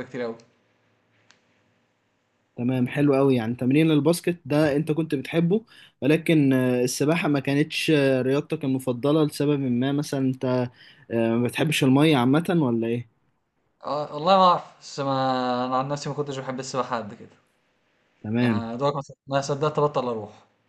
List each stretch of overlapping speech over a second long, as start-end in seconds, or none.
none